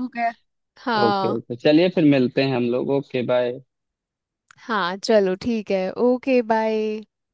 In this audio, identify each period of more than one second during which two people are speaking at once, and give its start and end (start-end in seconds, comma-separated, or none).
none